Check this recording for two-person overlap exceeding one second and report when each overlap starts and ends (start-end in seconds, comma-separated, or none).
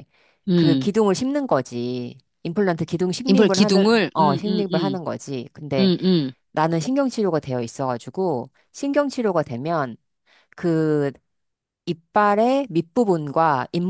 3.3-5.0